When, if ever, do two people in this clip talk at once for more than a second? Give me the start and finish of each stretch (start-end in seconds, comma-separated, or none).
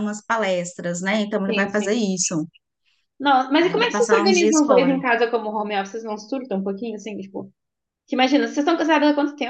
3.6-5.0